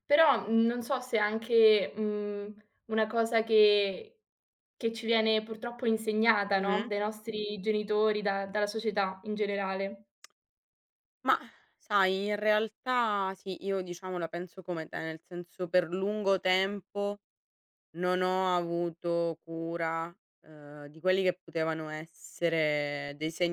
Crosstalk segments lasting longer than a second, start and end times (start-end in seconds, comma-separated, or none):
none